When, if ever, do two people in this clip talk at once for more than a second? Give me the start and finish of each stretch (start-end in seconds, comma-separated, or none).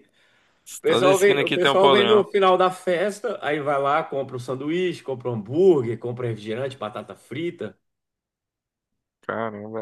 0.8-2.2